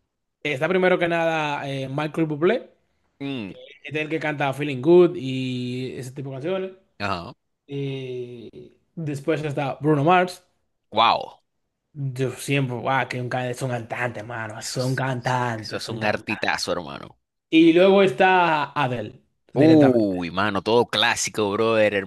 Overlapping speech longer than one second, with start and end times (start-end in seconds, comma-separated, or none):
14.6-16.5